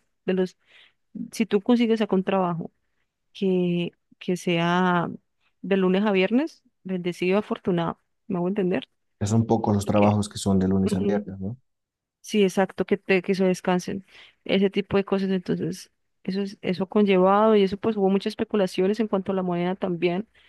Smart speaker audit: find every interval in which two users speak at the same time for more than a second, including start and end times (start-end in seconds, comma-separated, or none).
none